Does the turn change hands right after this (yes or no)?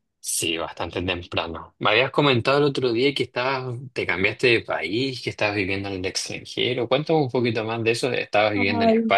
yes